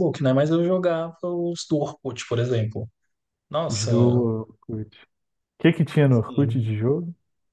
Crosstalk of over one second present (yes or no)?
no